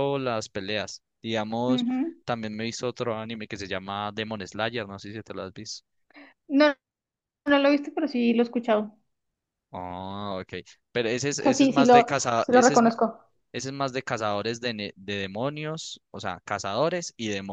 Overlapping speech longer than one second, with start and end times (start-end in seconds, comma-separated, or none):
11.4-12.9